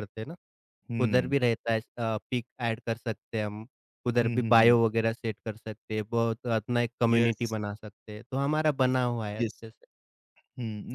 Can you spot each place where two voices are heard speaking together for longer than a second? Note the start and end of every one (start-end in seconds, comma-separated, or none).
none